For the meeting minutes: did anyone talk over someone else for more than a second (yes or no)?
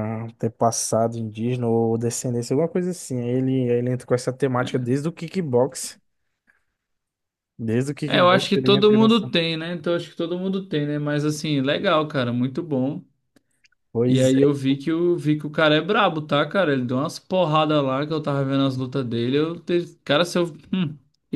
yes